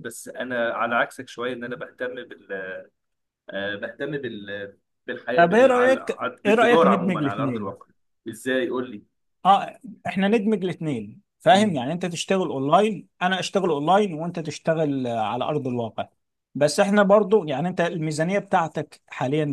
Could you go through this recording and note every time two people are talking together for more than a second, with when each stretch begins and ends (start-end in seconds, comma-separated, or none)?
5.3-7.7